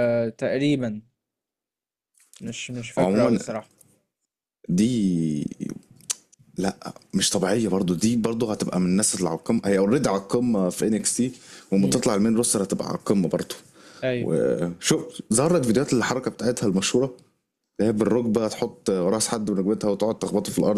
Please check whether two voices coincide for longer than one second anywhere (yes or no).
no